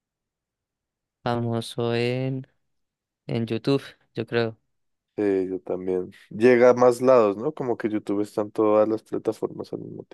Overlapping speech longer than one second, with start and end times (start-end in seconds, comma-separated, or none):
none